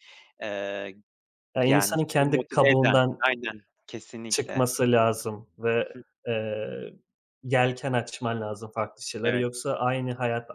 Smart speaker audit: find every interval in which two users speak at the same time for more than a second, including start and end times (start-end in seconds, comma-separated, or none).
1.6-3.2